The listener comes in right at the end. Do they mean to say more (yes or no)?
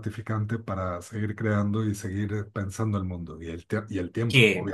yes